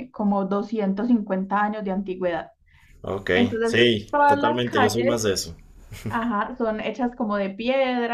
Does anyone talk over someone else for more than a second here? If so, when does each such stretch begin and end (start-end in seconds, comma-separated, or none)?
3.3-5.3